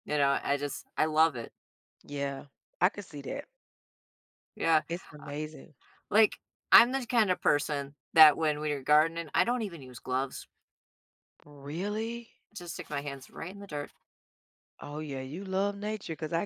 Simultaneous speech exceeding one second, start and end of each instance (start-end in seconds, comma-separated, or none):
none